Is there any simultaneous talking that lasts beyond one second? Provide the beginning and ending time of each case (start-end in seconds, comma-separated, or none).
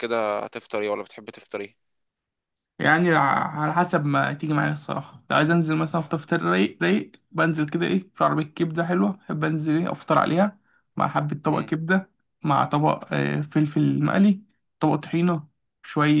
none